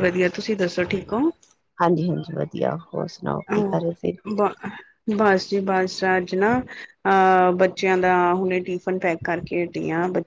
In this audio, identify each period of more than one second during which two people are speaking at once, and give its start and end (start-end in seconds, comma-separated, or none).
none